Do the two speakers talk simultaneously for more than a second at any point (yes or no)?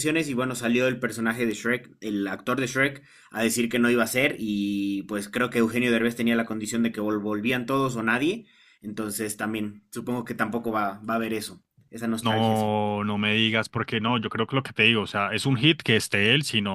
no